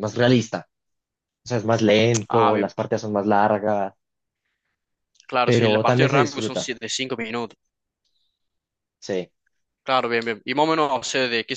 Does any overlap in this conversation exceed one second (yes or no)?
yes